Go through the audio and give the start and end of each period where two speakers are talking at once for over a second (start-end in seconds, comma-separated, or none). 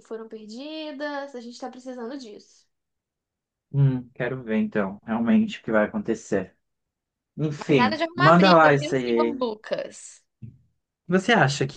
7.7-9.3